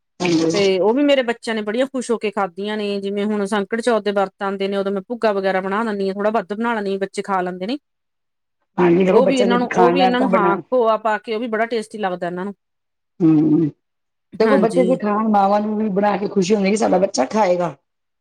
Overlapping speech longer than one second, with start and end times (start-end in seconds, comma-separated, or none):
9.1-10.5